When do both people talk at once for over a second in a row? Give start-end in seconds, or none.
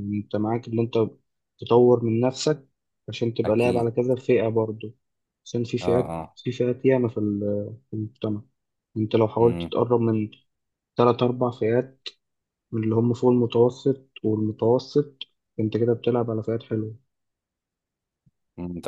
none